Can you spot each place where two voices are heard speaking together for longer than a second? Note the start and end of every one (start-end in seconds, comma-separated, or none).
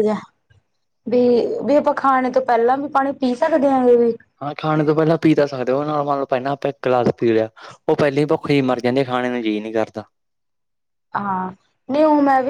none